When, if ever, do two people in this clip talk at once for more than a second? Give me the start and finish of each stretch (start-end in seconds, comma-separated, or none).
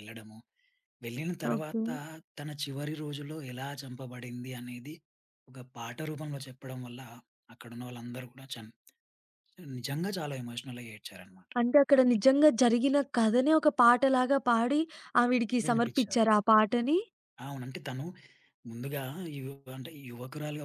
none